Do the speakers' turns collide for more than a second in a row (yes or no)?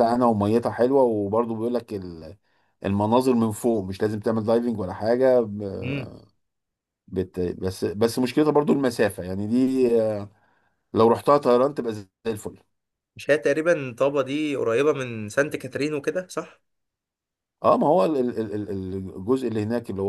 no